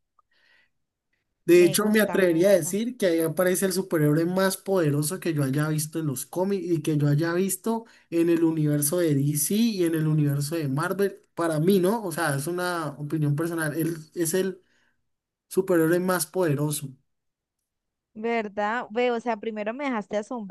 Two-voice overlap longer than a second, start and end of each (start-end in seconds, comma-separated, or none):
1.6-2.8